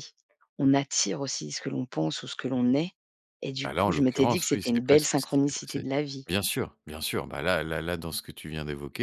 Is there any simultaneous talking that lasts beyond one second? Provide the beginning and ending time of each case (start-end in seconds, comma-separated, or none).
3.6-5.8